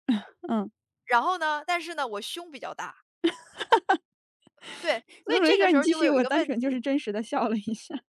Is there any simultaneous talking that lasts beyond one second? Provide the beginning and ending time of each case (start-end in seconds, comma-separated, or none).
5.3-6.8